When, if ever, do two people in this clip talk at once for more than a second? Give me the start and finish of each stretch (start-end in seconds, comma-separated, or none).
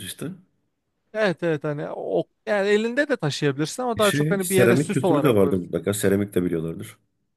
4.0-5.7